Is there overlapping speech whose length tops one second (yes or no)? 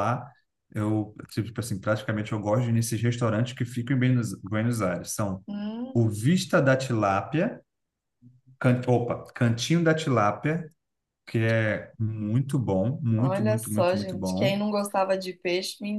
yes